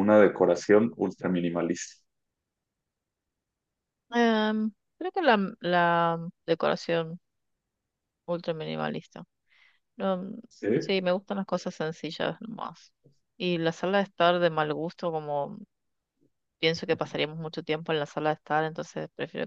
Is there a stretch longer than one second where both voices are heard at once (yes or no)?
no